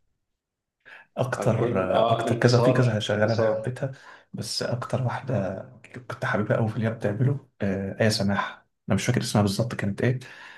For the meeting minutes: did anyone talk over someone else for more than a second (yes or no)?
yes